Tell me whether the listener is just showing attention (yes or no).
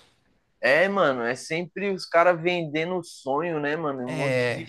yes